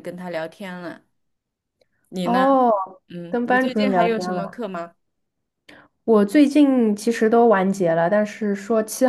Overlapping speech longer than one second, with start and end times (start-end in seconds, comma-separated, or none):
3.3-4.6